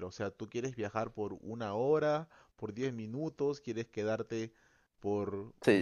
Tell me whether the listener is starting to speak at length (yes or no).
yes